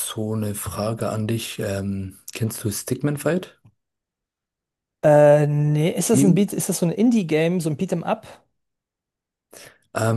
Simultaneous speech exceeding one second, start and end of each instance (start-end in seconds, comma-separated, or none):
none